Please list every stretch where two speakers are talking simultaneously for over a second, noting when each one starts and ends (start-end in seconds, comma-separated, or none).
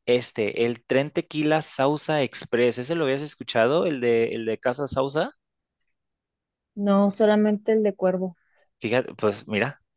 none